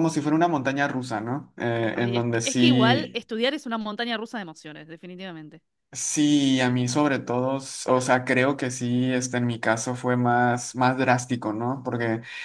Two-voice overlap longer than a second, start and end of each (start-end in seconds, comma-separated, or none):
1.9-3.2